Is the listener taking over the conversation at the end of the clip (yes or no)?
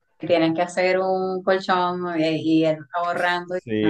yes